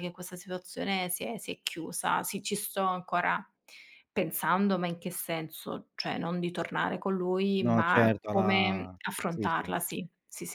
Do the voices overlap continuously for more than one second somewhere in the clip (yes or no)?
yes